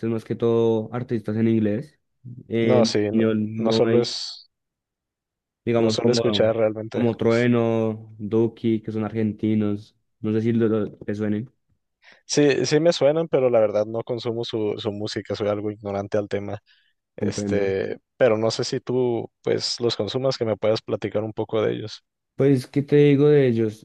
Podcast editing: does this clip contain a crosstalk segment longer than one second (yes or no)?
yes